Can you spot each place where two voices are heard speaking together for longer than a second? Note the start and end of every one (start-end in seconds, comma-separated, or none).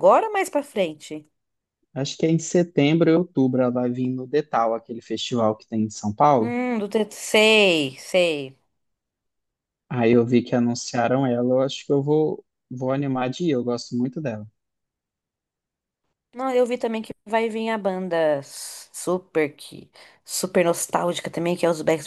none